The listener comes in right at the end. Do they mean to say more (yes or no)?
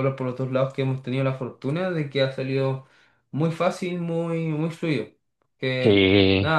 no